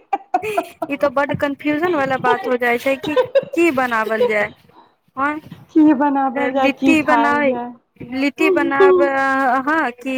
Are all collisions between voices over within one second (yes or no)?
no